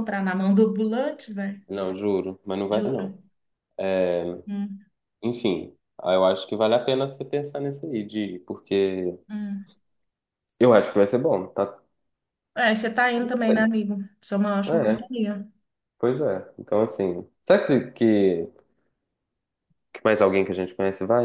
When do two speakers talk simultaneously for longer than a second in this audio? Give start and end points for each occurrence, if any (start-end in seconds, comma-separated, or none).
none